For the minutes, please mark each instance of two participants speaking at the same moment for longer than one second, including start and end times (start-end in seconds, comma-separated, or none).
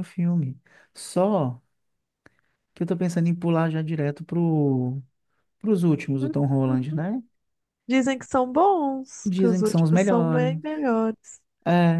9.2-10.5